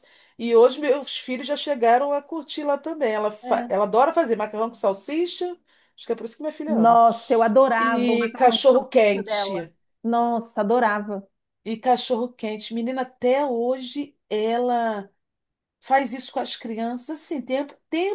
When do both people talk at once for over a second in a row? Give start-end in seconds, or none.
7.8-9.6